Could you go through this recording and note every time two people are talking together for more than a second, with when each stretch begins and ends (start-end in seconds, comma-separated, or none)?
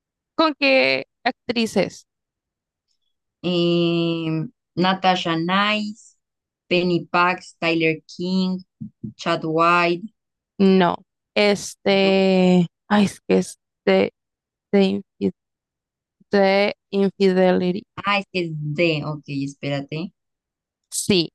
none